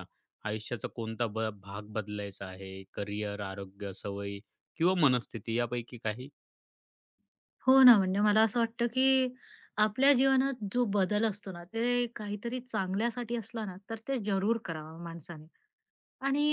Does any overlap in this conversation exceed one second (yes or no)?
no